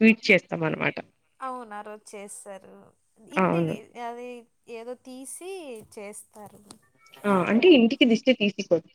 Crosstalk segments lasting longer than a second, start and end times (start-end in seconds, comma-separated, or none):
none